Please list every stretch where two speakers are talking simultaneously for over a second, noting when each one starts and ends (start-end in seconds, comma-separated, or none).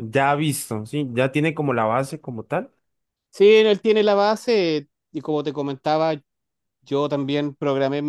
none